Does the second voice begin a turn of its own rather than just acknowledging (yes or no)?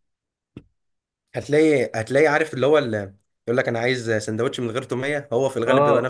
yes